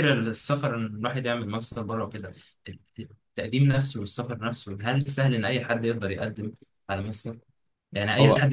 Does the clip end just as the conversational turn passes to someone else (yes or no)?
no